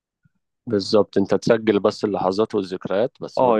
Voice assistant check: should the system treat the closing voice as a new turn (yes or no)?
yes